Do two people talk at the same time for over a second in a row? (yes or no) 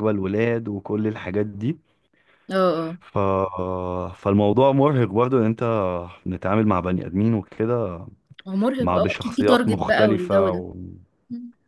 yes